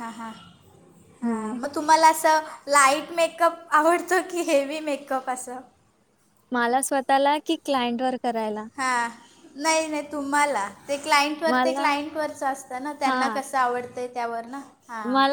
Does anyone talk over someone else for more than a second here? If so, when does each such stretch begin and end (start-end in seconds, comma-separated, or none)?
none